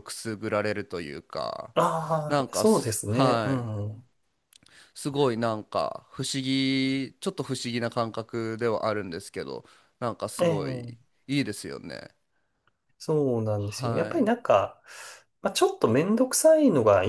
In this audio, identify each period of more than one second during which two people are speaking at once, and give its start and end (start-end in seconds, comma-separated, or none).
2.3-3.7